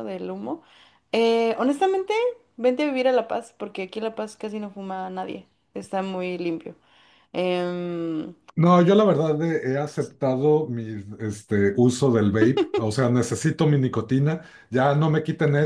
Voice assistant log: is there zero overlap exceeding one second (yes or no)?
yes